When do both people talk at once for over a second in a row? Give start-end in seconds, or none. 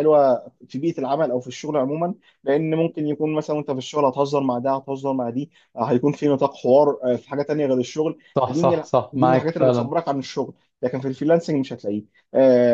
8.4-9.9